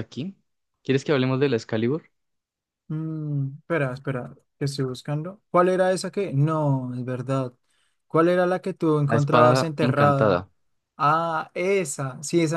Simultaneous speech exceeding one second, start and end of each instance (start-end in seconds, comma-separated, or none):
9.0-10.4